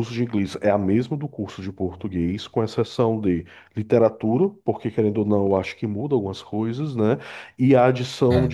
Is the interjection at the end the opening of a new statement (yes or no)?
no